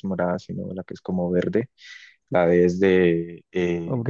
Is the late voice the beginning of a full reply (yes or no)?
yes